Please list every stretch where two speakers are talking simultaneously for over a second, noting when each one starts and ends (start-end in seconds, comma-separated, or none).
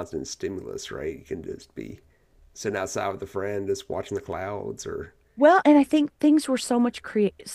none